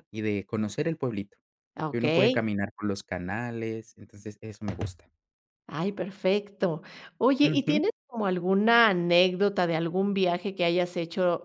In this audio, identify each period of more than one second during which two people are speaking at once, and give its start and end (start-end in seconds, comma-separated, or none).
none